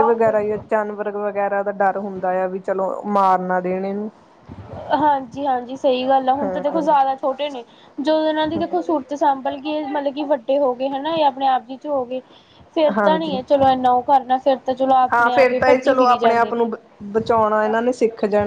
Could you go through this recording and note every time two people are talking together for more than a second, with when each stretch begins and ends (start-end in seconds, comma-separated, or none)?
15.1-16.7